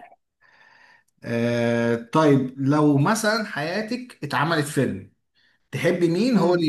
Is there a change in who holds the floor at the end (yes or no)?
no